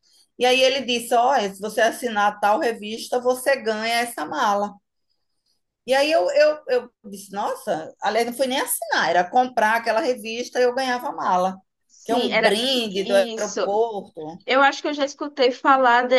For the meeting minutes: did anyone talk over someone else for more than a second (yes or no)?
yes